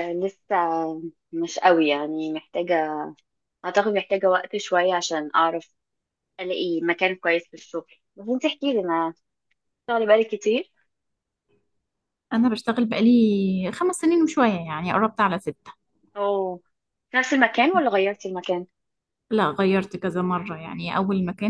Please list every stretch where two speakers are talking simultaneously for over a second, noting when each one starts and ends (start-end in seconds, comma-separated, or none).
none